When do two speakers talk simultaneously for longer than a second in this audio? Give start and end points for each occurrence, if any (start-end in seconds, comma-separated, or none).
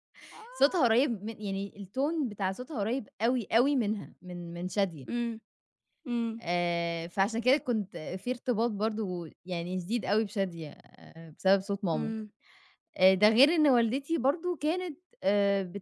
none